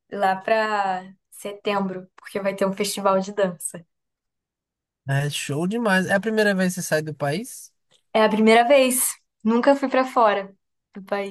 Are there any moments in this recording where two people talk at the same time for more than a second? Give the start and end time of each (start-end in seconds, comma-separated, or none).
none